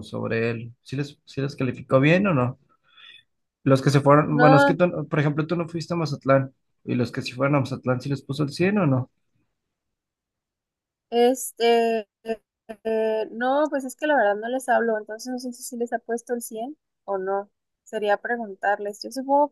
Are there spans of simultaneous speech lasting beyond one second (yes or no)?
no